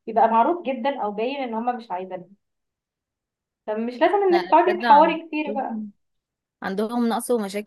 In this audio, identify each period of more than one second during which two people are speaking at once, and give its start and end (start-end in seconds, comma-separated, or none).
4.3-5.8